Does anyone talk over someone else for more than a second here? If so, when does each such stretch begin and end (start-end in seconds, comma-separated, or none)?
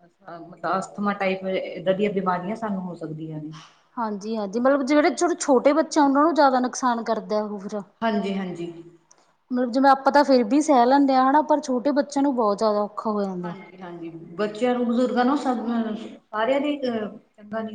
none